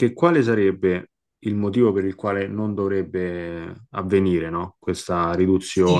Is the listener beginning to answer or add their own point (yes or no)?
yes